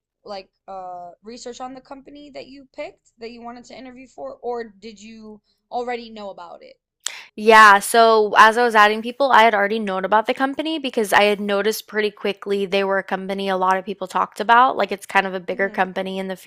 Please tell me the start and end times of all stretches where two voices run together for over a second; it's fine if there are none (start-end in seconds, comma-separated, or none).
none